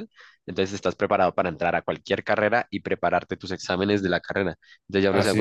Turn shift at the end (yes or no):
no